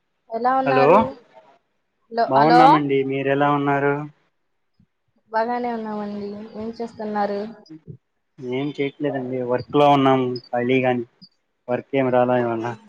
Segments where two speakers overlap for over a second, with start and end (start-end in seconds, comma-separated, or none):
none